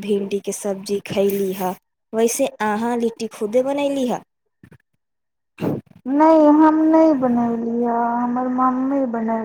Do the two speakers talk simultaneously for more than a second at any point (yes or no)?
yes